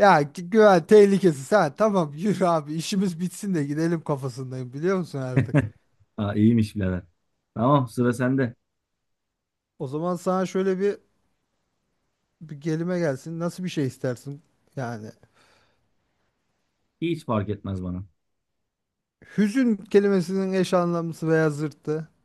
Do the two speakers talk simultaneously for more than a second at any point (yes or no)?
no